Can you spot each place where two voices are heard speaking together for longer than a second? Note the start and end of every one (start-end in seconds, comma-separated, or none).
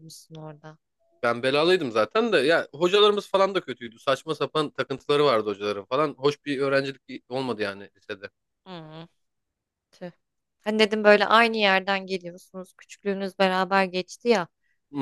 none